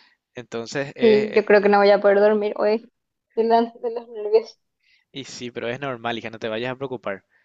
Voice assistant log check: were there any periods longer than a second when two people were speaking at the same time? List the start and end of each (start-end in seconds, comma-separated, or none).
none